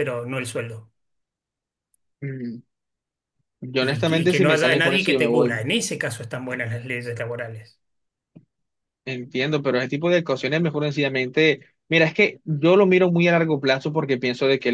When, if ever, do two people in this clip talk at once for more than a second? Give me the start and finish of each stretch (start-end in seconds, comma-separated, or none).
3.8-5.7